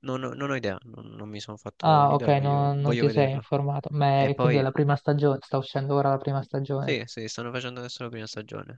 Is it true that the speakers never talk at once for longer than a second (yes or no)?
no